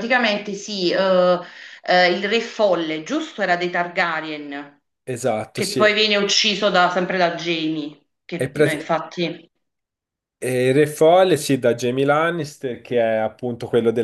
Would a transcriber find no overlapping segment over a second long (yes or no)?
yes